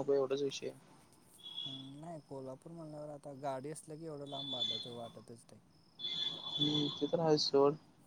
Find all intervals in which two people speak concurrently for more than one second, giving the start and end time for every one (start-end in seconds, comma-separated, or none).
none